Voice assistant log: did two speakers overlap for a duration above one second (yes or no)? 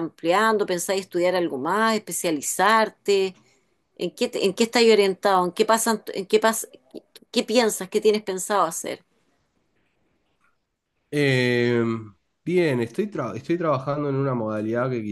no